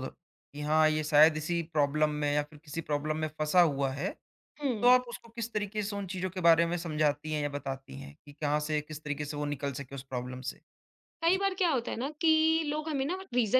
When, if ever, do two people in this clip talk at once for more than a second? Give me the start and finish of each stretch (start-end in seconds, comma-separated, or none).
none